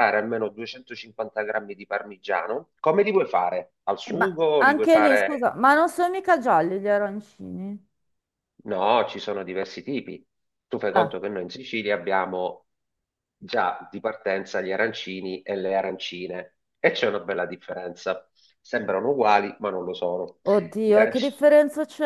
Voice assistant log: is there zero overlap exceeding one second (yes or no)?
no